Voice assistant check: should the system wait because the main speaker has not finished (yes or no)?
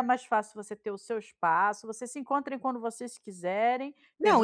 no